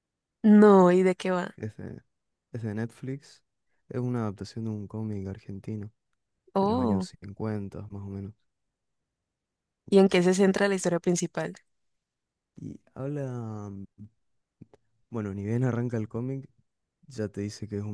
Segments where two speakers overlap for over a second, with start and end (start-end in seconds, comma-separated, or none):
none